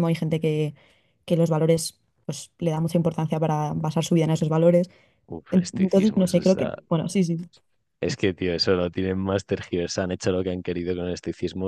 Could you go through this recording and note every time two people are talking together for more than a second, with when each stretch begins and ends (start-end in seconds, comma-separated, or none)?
5.5-6.7